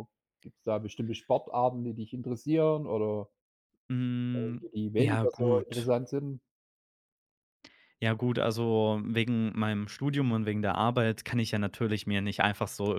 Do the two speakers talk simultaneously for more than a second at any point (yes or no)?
yes